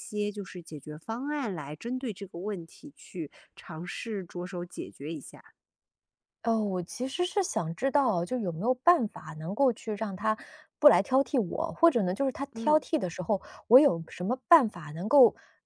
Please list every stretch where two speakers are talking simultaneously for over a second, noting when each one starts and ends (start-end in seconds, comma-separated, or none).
none